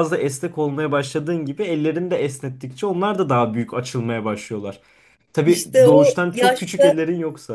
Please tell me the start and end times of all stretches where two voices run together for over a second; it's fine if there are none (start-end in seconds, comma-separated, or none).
5.5-7.0